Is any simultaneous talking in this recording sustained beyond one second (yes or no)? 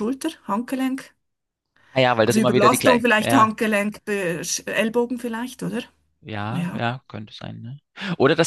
yes